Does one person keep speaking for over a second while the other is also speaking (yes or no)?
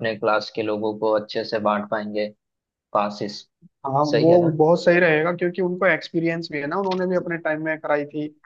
no